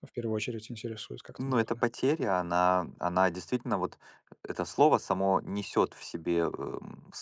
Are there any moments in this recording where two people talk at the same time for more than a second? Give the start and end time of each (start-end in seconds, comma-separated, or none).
none